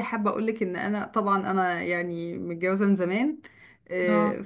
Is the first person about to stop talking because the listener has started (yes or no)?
no